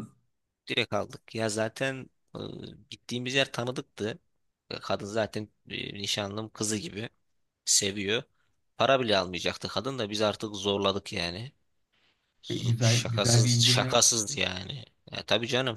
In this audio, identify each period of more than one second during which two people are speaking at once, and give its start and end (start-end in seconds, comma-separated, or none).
12.5-14.0